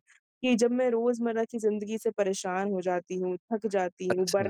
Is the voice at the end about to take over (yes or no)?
no